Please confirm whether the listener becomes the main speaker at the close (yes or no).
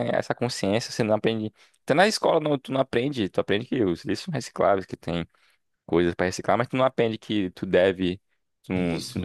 no